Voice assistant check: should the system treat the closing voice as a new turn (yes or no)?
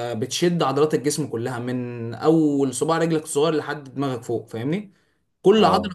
no